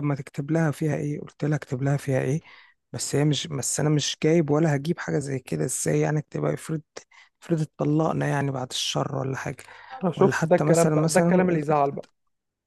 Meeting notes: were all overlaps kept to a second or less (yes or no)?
no